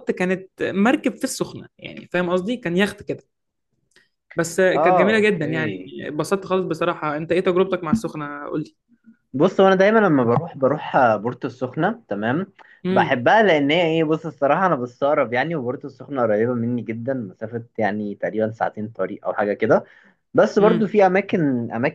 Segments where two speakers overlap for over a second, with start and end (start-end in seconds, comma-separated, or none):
4.7-5.9